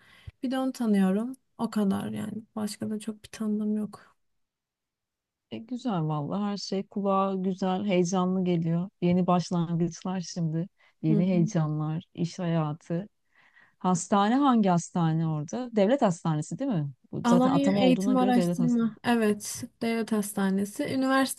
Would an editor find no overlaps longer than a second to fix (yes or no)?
no